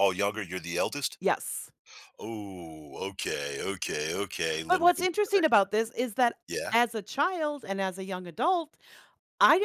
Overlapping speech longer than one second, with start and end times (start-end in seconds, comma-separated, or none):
none